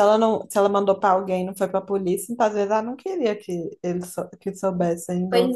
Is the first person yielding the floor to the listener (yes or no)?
yes